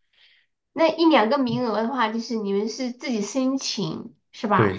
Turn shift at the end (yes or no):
yes